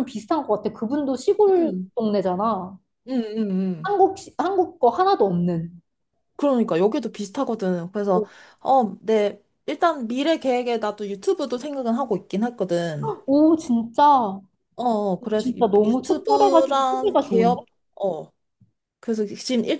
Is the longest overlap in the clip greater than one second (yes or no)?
yes